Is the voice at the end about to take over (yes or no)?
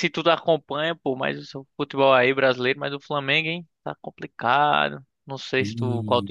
no